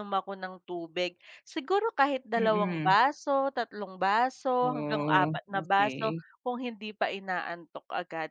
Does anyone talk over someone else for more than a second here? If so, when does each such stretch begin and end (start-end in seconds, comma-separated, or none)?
4.6-6.2